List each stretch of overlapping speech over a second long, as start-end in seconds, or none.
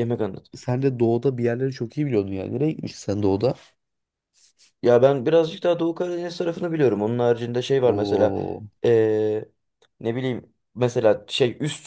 none